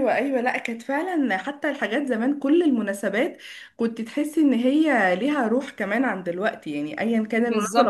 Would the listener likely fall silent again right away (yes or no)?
no